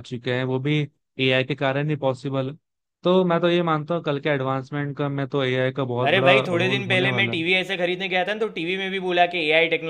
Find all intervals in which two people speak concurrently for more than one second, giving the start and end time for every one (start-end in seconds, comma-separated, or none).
6.1-7.4